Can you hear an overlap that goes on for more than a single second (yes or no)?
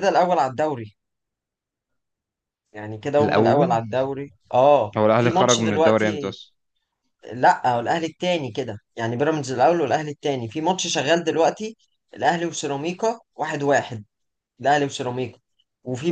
yes